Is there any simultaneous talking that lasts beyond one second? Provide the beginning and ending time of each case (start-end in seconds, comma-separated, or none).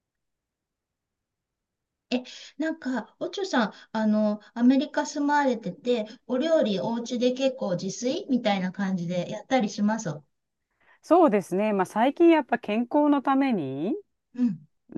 none